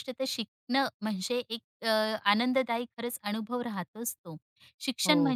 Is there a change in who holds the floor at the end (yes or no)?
no